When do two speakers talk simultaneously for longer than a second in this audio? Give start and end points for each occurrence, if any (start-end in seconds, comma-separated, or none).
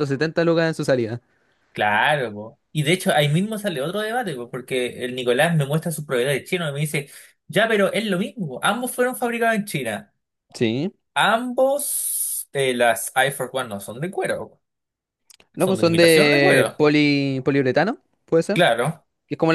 15.6-16.8